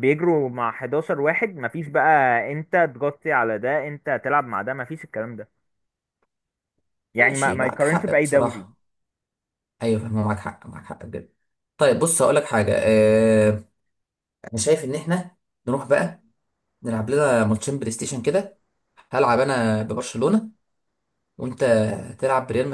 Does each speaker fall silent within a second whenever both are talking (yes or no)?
no